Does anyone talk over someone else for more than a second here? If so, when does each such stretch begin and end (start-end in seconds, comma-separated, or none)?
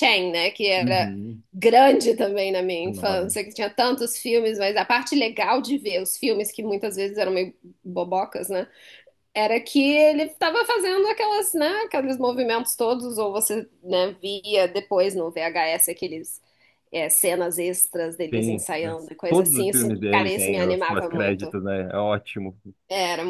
18.3-21.5